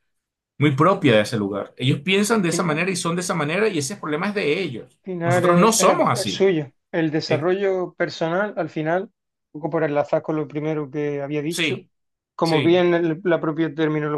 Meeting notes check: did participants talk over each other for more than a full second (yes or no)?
yes